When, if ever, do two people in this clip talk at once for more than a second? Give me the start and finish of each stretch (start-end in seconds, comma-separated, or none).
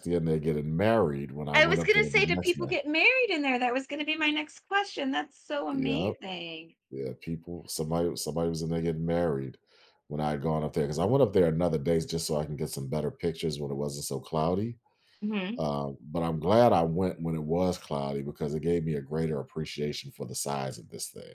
1.5-2.8